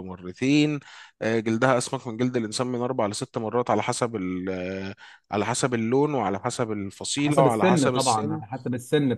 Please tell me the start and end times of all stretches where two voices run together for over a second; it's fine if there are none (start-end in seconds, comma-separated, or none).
7.2-8.4